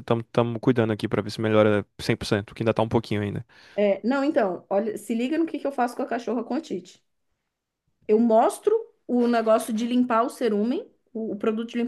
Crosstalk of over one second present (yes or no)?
no